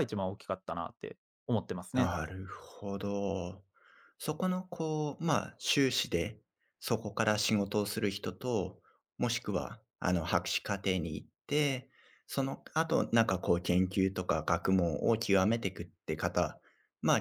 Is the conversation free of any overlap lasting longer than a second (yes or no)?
yes